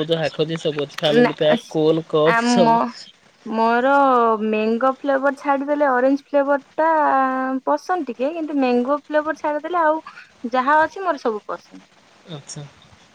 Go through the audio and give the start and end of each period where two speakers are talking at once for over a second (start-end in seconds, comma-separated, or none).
none